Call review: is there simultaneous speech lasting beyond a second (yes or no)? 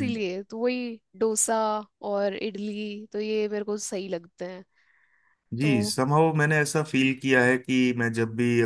no